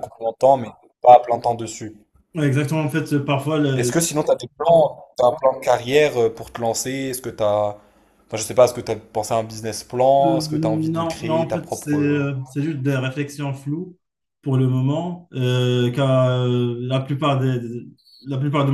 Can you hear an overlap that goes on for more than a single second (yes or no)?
yes